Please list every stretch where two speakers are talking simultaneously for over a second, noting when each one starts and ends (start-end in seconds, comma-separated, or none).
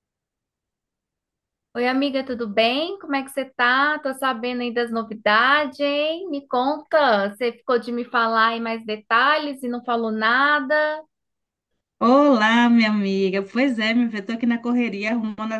none